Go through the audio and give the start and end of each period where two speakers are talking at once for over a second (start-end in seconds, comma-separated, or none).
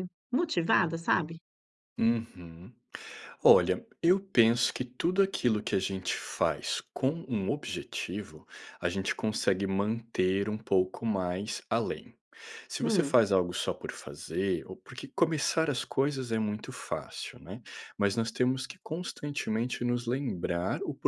none